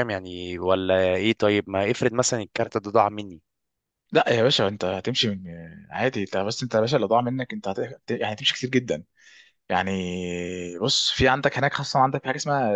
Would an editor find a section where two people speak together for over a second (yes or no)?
no